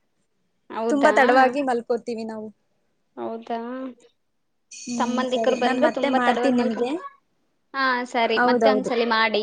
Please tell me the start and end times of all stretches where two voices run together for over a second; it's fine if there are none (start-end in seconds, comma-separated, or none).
5.0-6.9